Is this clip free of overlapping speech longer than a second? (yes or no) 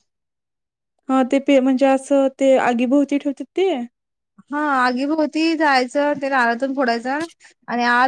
yes